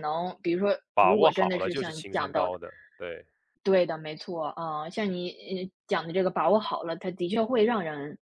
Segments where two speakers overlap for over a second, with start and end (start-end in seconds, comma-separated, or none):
0.9-2.6